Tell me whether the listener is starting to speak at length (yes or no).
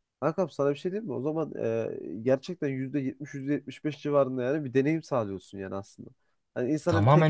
no